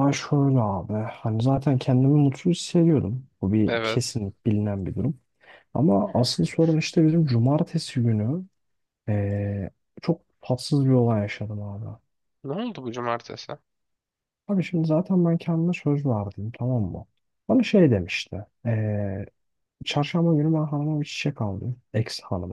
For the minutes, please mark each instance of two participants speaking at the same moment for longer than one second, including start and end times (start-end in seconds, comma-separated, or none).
none